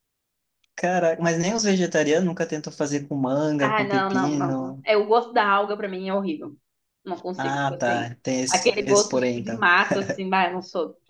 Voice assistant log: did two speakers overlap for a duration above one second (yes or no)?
yes